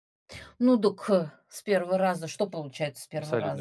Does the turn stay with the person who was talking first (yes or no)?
no